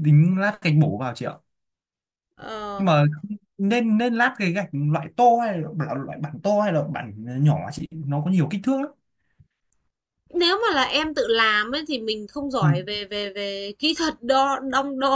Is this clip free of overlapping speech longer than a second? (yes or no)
yes